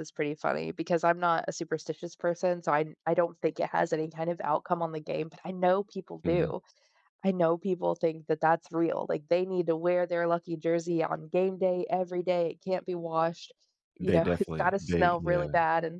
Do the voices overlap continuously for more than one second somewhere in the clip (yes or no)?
yes